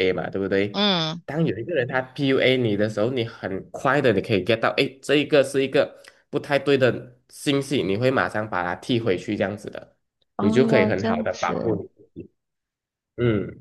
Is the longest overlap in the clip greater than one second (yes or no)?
yes